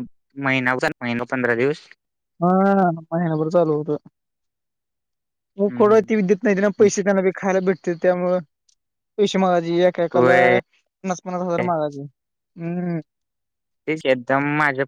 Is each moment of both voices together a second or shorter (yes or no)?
yes